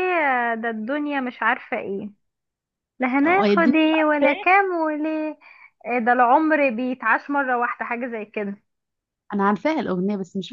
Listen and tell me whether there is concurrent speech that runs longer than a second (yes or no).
yes